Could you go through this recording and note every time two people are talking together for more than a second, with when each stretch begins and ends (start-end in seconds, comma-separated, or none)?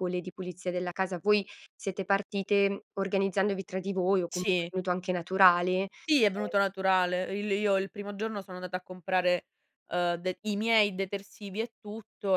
none